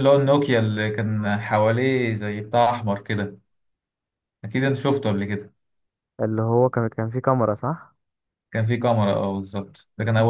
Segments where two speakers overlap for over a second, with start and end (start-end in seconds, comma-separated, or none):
none